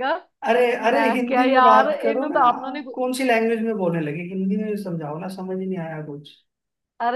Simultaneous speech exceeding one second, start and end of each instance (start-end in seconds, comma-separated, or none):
1.0-2.9